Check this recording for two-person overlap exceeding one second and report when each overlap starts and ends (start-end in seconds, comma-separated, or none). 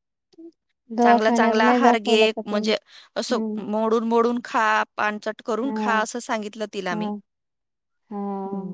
1.0-2.7